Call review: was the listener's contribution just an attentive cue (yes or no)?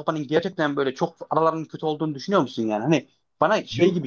yes